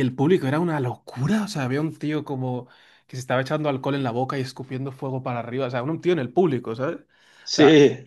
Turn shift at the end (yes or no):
no